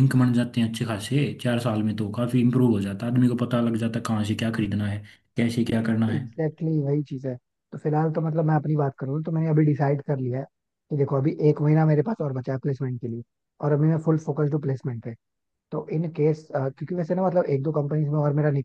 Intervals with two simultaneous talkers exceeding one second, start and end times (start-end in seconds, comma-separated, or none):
none